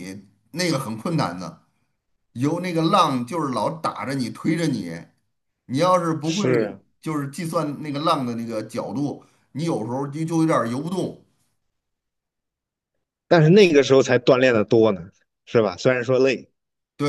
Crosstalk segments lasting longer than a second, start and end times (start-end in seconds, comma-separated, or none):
none